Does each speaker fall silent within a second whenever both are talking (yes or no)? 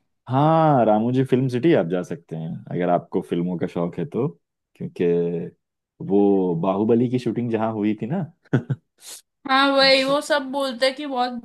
yes